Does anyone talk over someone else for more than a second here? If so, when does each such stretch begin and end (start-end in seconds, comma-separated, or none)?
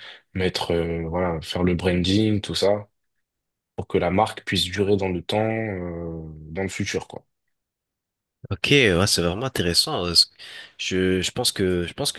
none